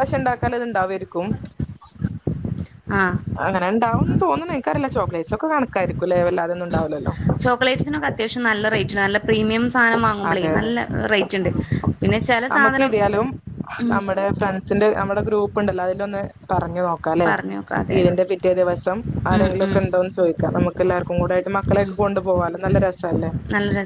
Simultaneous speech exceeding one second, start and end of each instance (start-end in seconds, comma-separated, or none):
none